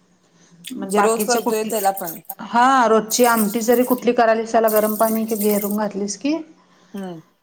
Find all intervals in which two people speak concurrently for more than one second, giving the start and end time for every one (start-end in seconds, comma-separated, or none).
0.9-2.2